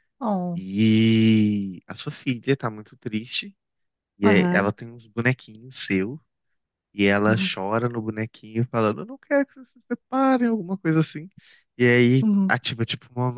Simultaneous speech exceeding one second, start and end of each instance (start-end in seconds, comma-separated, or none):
none